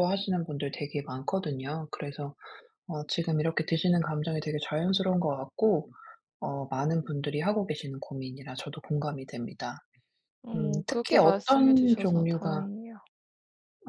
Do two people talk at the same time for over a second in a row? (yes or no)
yes